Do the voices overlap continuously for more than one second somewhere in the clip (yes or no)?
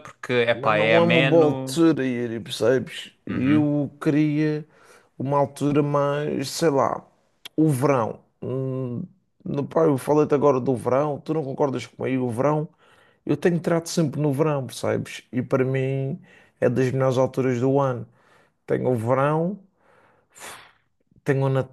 yes